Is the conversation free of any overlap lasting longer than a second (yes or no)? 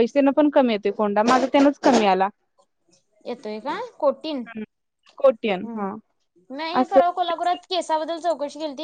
yes